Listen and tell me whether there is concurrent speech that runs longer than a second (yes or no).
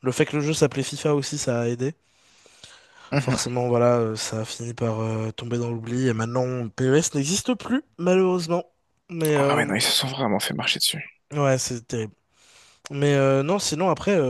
no